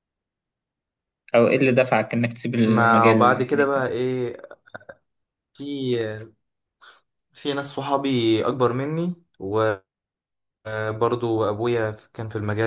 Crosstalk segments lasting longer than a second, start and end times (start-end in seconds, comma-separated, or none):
2.6-3.9